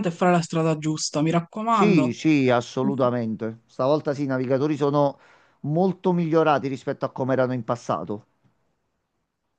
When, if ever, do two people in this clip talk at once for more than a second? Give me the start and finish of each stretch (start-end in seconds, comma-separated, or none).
none